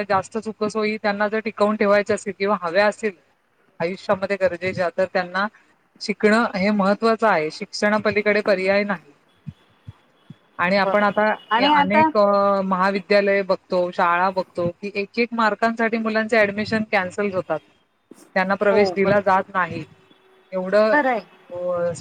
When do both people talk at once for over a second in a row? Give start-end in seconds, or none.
none